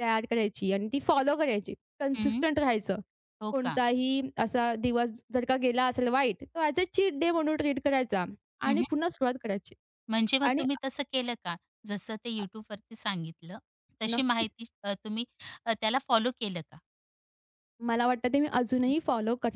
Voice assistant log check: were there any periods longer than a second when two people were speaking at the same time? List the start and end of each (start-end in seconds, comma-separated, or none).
none